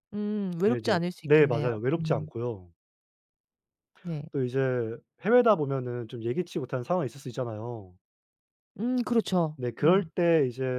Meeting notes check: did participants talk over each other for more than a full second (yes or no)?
yes